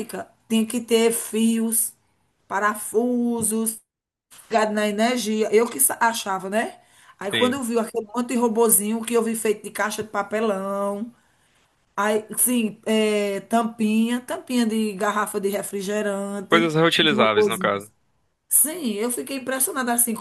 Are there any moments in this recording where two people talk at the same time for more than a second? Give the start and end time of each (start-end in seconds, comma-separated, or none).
16.5-17.9